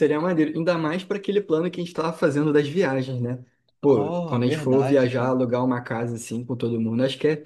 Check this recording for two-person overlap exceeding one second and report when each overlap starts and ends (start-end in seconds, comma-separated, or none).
3.9-5.4